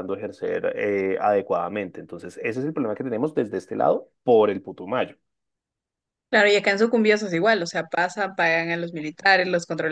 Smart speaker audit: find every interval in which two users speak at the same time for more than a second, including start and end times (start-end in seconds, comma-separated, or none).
none